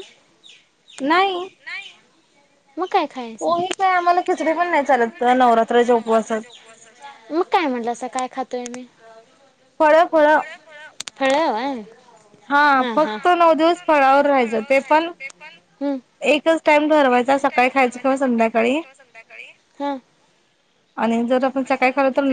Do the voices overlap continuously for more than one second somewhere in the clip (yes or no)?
yes